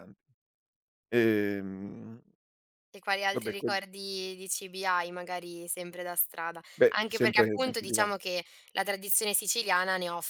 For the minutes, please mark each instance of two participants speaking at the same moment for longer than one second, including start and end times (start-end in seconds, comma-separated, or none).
6.8-8.1